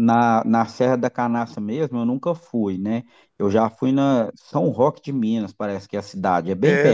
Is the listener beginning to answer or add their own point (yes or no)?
yes